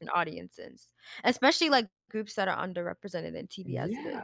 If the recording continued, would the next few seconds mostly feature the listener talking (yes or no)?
yes